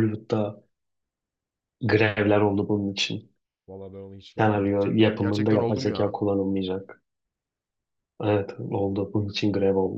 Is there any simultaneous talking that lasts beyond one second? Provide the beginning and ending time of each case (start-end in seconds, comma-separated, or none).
4.3-6.2